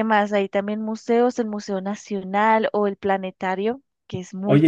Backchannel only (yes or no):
no